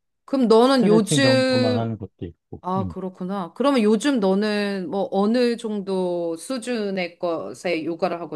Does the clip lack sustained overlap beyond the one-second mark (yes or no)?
no